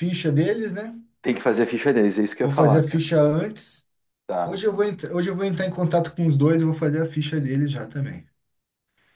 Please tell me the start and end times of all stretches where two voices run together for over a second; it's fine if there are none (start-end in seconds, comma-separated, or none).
none